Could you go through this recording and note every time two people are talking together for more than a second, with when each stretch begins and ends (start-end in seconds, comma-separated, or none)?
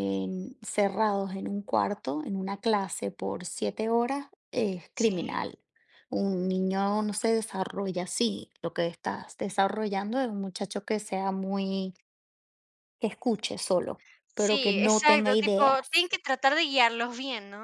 14.4-15.9